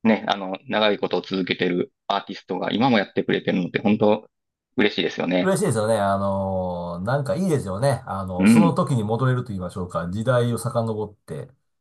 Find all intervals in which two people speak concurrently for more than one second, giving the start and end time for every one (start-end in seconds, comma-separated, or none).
none